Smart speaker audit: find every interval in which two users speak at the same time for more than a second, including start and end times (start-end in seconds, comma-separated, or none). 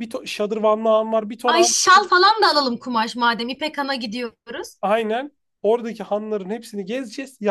none